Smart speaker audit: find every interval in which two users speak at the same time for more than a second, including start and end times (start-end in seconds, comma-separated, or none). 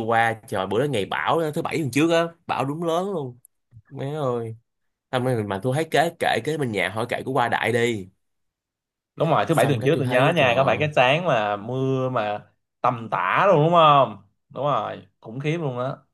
9.5-10.9